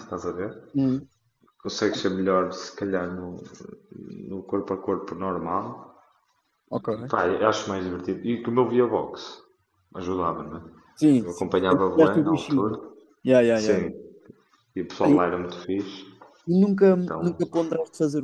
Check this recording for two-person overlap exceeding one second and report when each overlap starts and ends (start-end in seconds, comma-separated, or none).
11.2-12.8